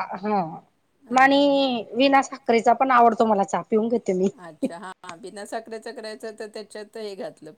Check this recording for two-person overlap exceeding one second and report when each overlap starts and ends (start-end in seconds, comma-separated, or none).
none